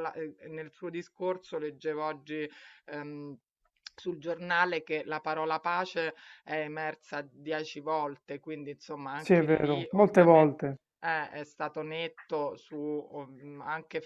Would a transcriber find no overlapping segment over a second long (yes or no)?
no